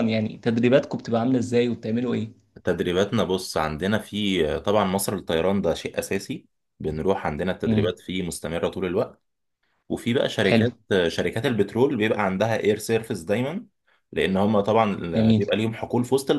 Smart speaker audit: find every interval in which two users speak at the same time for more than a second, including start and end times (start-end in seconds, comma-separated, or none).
none